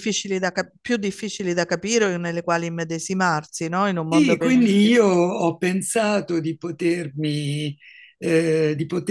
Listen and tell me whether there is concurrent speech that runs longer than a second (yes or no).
no